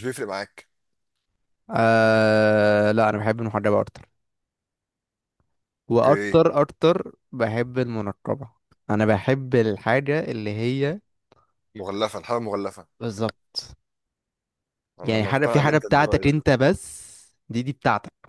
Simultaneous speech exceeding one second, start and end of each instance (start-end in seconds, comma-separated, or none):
15.0-16.3